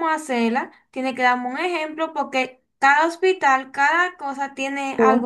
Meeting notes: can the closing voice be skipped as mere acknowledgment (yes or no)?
no